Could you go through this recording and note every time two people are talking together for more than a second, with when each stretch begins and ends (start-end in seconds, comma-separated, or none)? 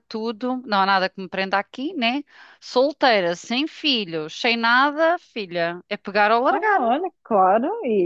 none